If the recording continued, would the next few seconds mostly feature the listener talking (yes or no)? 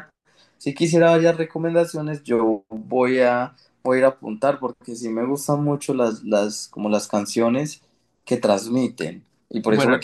no